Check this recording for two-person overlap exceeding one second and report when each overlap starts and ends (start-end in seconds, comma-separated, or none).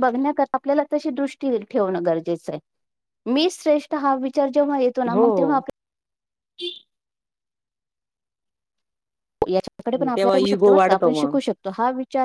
9.9-11.4